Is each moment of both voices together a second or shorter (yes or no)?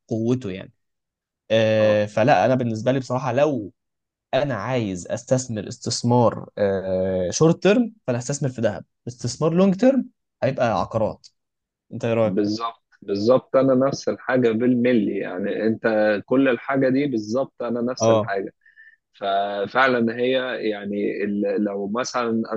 yes